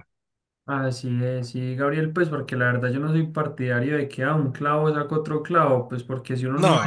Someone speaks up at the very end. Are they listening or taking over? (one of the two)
listening